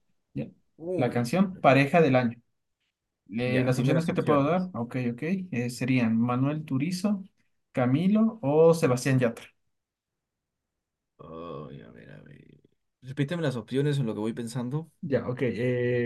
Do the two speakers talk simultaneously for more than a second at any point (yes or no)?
yes